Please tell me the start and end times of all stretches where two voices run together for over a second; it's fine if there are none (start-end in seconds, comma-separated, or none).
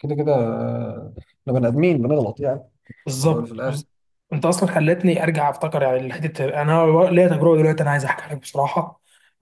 none